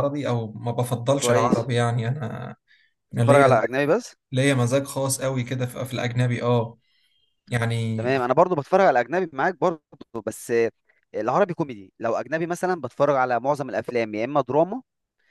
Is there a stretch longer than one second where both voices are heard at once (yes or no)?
no